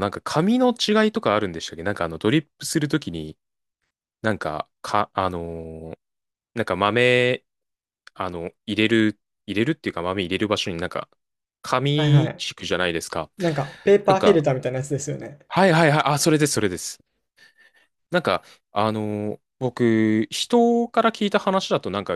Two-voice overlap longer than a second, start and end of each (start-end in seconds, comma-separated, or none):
none